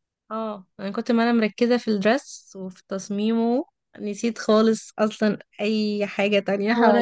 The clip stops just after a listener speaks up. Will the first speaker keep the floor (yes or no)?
no